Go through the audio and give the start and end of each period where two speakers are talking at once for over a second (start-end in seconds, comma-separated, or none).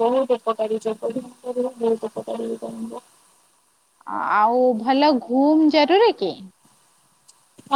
none